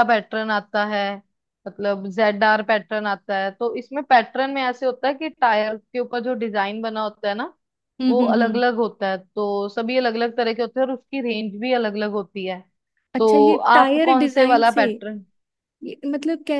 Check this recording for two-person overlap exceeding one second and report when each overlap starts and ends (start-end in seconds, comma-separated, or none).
13.2-14.8